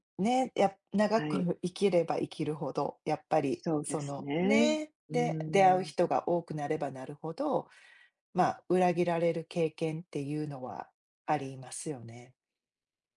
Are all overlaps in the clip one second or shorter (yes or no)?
no